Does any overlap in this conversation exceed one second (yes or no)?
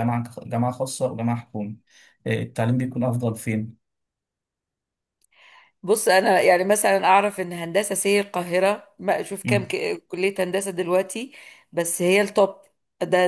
no